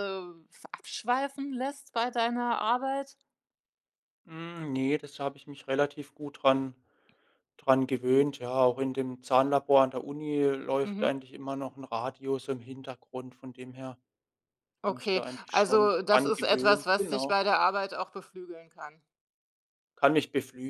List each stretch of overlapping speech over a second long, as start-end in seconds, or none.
14.9-17.4